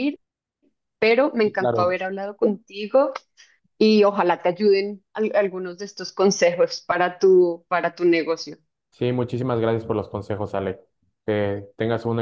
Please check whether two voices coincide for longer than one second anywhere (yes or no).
no